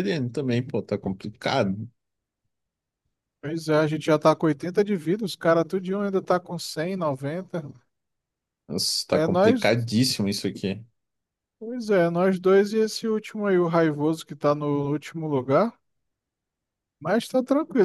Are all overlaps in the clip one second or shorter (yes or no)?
yes